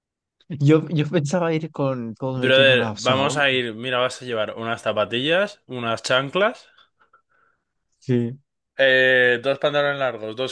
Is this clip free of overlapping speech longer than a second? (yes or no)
no